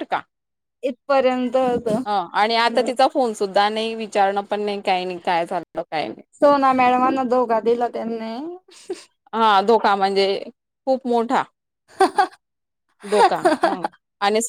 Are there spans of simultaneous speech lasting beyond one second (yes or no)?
no